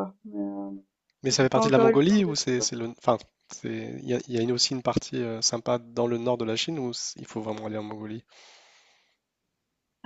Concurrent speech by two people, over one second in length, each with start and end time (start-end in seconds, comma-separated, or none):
1.3-2.7